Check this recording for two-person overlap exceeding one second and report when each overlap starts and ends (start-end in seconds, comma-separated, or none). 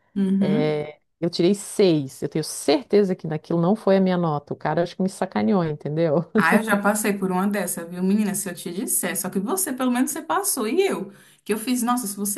none